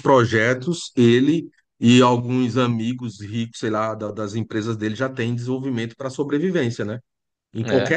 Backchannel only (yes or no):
yes